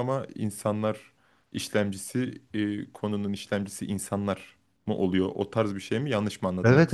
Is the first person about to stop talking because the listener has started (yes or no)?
yes